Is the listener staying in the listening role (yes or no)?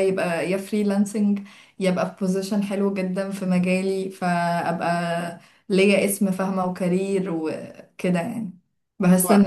yes